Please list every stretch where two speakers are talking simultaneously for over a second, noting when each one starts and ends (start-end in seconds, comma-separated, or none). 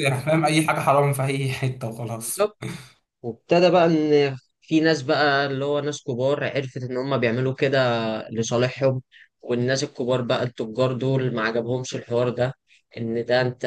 none